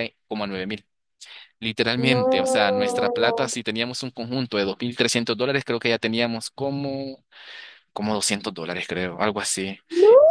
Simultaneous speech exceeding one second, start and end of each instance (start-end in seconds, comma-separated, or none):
2.1-3.5